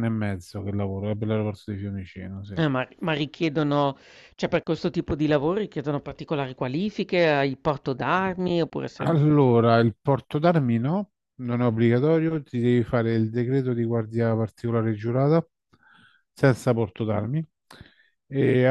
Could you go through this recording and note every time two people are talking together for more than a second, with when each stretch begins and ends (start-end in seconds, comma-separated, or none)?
none